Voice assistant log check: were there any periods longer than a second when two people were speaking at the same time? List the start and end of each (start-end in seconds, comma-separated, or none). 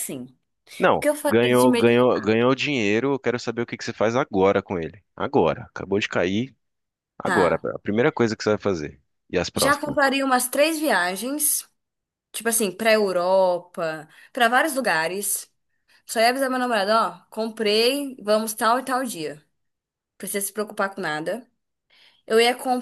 0.9-2.4